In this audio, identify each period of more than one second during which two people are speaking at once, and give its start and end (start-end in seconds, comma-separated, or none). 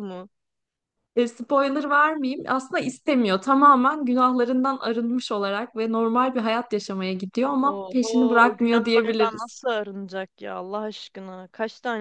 7.6-9.6